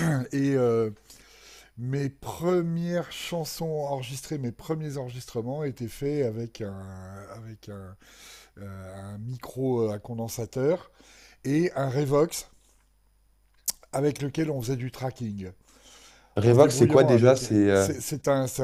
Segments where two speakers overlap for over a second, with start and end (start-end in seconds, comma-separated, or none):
16.4-17.9